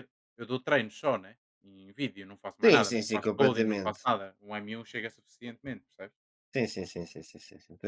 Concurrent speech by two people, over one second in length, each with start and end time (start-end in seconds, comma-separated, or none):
2.6-4.0